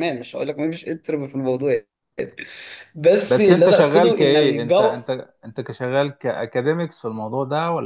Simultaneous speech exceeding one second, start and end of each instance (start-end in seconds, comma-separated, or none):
3.2-5.0